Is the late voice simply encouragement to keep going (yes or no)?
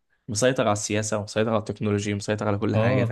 no